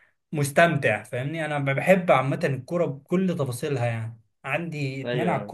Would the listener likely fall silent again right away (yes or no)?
yes